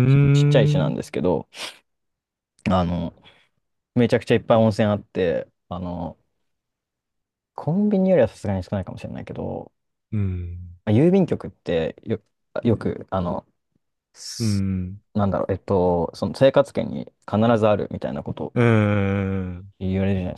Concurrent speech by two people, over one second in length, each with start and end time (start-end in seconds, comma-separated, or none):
none